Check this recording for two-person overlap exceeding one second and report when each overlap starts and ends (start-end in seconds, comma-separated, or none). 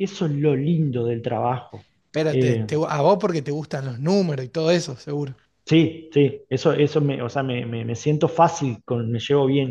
none